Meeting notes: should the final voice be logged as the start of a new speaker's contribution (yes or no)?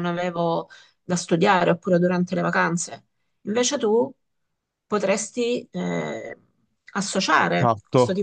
yes